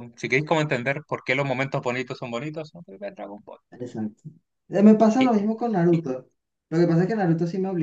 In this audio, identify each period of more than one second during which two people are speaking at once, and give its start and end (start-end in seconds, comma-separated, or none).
none